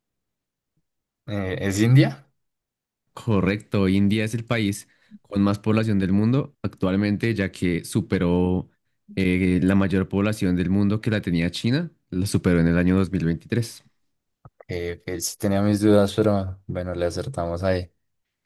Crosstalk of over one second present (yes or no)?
no